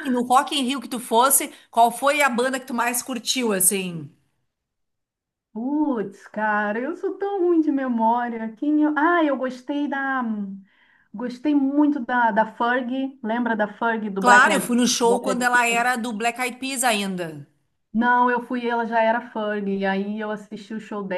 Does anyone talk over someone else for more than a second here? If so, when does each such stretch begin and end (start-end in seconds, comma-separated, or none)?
14.2-15.9